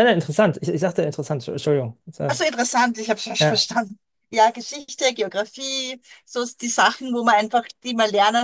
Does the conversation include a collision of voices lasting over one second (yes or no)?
no